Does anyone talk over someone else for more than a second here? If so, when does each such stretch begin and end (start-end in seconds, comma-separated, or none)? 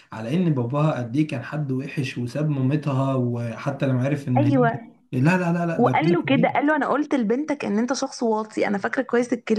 none